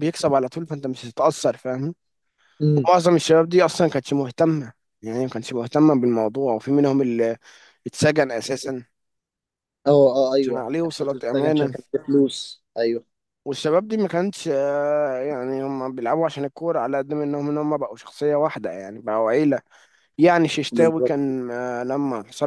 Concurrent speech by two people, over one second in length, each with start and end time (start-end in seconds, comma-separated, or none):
10.4-11.7